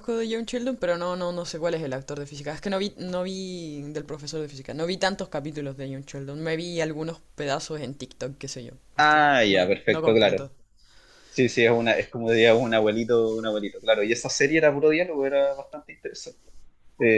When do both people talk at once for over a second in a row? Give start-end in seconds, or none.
9.0-10.5